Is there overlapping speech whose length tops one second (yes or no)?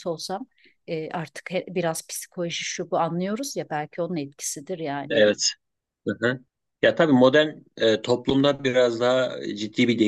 no